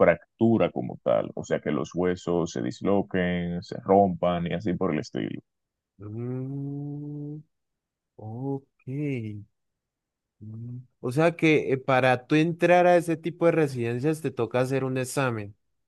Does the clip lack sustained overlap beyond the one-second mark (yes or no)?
yes